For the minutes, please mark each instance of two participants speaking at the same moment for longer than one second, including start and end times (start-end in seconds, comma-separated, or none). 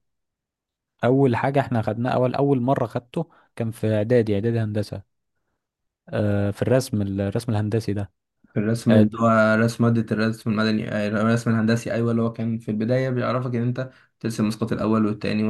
none